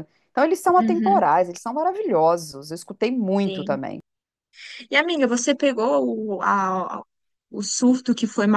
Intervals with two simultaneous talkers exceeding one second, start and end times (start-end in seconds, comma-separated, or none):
none